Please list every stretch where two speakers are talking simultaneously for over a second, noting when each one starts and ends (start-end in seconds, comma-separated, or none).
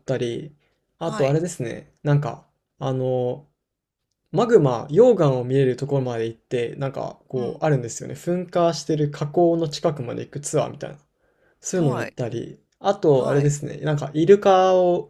none